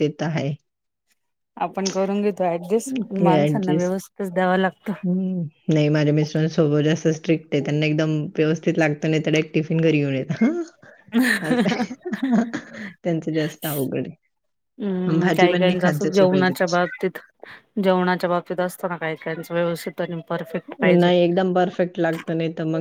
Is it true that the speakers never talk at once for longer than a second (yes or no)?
no